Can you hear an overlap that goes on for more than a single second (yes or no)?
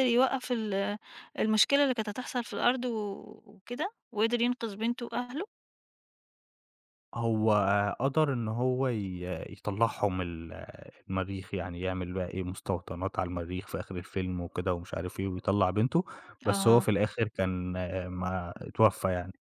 no